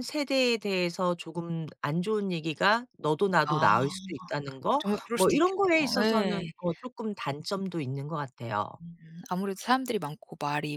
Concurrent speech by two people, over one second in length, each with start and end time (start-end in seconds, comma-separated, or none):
4.8-6.5